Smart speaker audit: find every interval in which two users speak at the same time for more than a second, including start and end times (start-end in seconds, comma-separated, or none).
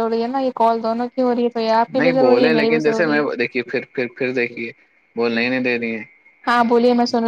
2.0-3.7